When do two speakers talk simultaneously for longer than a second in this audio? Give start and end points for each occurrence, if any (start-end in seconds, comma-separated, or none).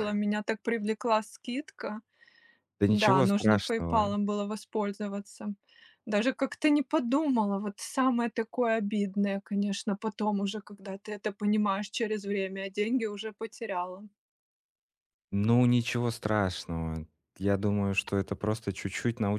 2.8-4.2